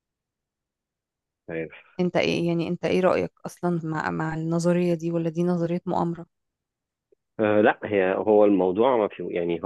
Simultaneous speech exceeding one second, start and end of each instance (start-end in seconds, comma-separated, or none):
none